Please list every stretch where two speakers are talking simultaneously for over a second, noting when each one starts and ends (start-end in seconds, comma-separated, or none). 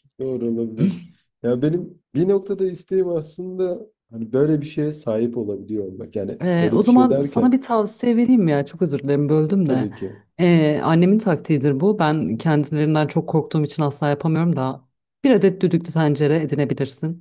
6.4-7.6